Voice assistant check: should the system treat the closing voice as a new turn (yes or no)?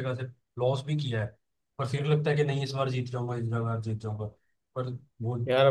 yes